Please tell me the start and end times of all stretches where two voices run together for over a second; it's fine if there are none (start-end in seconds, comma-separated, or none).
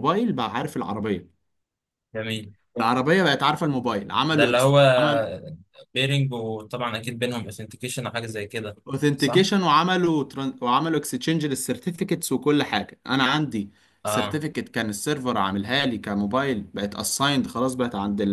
none